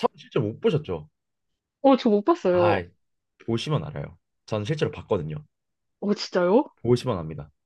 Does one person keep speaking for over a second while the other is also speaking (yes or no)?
no